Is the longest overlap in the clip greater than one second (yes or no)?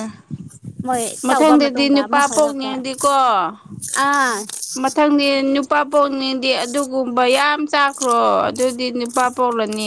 yes